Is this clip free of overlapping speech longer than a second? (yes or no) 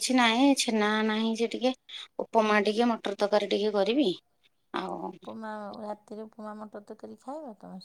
yes